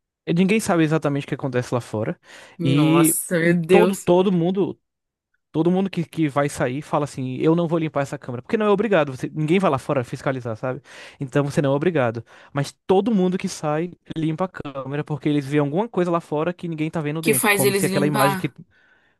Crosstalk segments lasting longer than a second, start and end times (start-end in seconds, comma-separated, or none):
2.6-4.1, 17.2-18.5